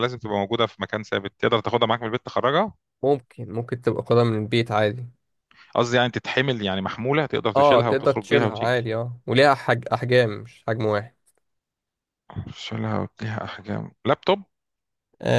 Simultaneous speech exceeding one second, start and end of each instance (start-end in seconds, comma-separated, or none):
7.5-8.9